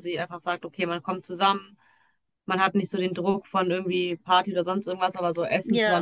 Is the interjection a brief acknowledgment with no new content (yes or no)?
yes